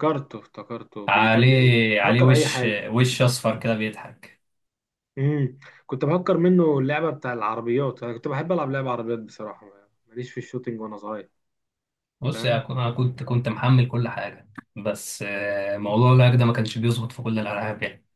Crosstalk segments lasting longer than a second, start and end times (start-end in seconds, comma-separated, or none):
1.1-2.9